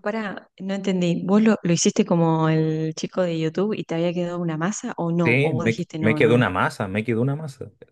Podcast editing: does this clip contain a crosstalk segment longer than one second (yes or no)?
yes